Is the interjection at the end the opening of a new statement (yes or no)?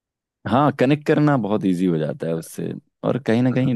no